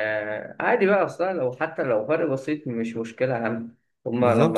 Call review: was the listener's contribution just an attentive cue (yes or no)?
no